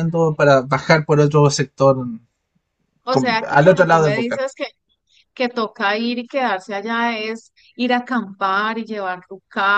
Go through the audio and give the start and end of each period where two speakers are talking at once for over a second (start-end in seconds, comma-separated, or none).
3.1-4.4